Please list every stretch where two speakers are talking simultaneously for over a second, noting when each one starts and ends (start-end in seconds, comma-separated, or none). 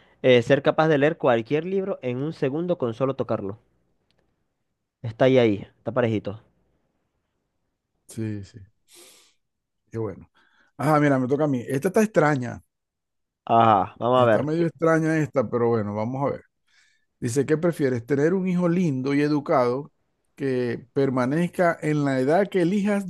none